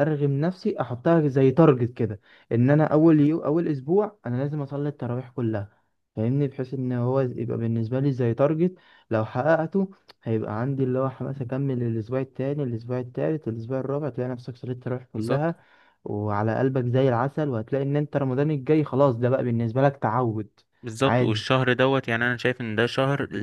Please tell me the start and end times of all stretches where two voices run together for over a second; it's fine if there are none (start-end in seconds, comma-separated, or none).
none